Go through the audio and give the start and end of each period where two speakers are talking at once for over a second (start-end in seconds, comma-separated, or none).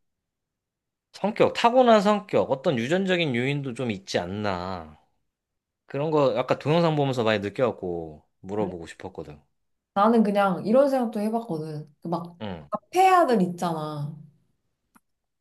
none